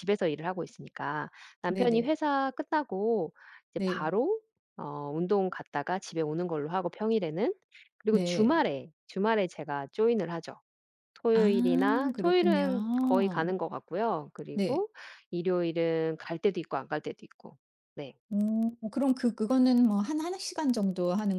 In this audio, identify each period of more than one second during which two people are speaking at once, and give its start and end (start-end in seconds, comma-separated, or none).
11.3-13.5